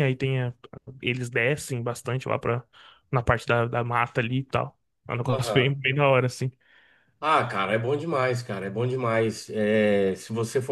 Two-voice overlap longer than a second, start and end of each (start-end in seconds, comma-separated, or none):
none